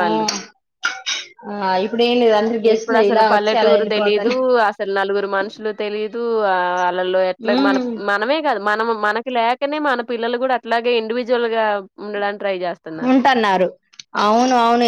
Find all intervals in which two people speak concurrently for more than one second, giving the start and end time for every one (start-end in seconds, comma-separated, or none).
2.7-4.2